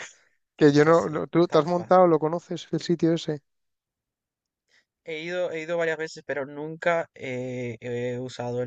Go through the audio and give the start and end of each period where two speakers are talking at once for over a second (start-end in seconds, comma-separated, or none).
0.6-2.1